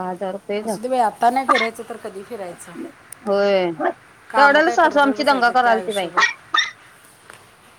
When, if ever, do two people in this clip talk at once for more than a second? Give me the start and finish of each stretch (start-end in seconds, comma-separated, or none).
4.3-6.1